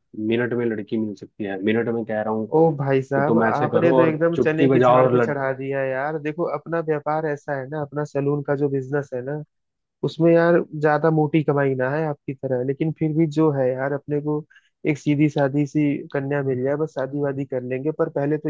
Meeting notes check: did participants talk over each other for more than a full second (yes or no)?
yes